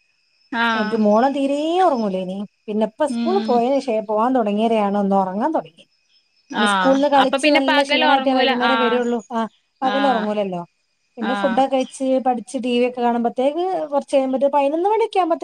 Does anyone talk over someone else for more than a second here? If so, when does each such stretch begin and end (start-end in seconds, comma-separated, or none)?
6.7-9.0